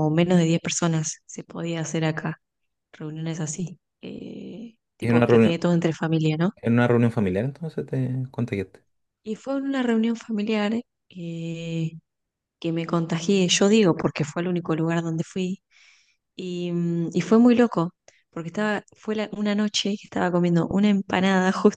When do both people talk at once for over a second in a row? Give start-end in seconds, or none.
none